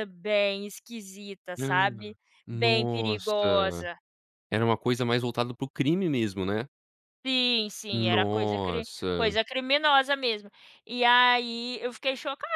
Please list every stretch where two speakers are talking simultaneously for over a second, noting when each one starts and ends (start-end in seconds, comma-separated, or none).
2.5-3.8, 7.9-9.4